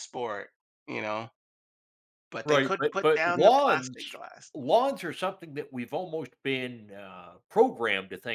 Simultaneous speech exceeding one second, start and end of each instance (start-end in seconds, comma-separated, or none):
2.5-4.2